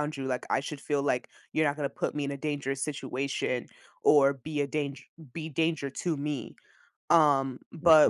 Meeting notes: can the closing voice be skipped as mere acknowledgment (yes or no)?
yes